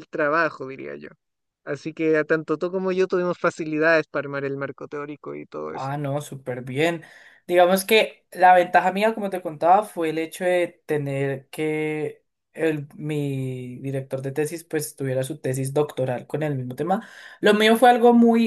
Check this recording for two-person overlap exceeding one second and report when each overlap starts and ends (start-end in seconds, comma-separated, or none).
none